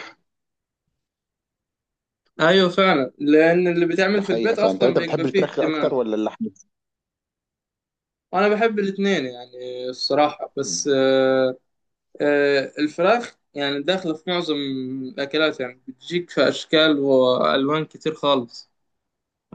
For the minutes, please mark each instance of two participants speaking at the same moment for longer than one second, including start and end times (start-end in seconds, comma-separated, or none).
4.2-6.0